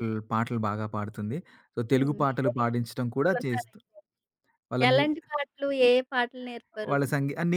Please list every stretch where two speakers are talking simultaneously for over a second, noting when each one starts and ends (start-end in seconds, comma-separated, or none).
1.9-3.8